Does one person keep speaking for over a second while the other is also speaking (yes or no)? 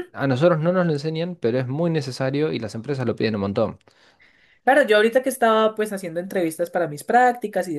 no